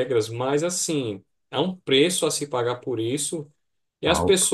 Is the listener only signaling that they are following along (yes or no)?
yes